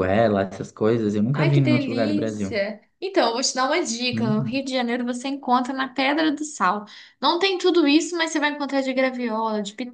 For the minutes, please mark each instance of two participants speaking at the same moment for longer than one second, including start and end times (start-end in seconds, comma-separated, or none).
1.3-2.6